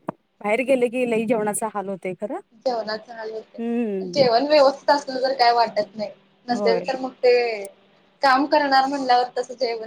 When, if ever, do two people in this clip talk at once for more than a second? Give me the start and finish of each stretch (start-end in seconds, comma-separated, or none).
none